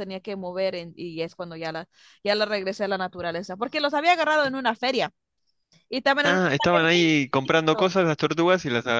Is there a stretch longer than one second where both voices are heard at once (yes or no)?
yes